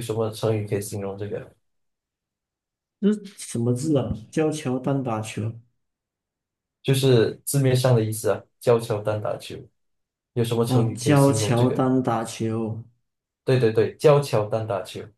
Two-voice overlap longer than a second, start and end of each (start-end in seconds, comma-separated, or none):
10.7-11.9